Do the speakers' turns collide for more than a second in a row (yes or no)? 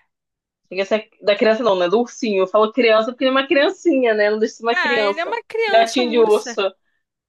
yes